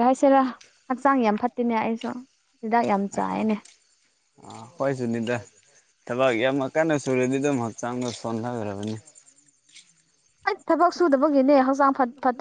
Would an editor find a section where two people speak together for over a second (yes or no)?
no